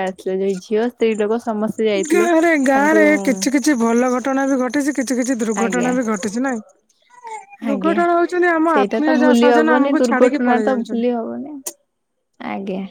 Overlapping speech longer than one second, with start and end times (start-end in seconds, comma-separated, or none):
8.7-11.0